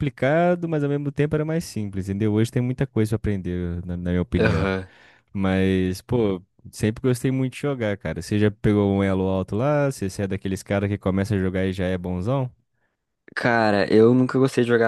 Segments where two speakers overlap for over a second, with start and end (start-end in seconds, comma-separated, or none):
none